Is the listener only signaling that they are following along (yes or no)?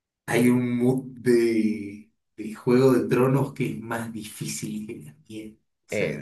no